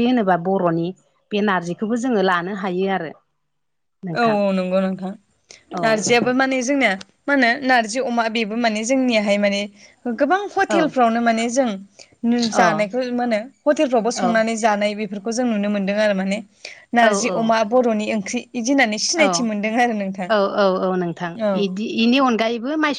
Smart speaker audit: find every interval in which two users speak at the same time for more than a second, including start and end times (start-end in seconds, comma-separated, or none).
none